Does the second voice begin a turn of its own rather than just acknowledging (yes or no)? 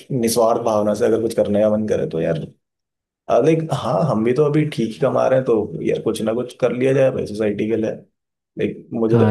yes